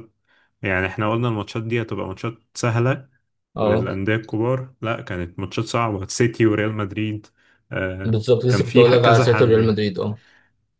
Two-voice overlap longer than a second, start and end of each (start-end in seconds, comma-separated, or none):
8.0-9.8